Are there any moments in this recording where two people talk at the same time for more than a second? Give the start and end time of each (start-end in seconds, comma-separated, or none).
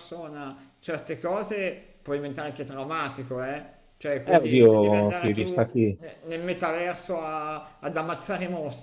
4.2-6.0